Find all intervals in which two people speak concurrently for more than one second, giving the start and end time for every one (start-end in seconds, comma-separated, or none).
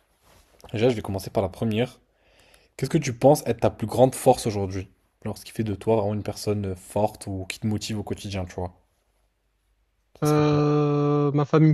none